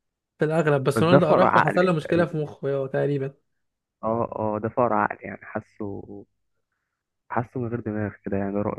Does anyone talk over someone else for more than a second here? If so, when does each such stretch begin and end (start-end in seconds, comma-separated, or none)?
1.0-2.5